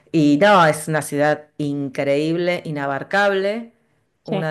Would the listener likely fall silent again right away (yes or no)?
yes